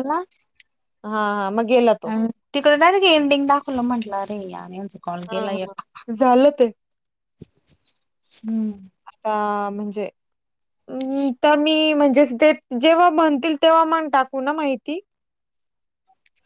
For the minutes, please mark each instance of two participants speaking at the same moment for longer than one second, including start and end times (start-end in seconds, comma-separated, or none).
none